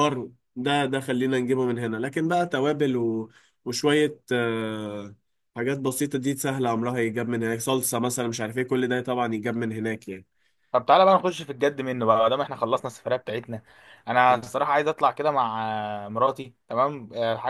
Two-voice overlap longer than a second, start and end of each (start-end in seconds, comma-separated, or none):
none